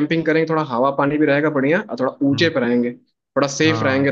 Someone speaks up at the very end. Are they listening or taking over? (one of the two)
taking over